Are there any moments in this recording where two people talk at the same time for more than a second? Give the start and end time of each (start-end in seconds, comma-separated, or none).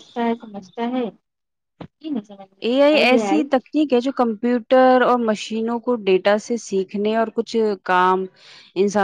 none